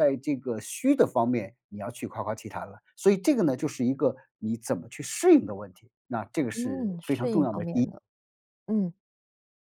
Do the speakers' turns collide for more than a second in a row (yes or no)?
yes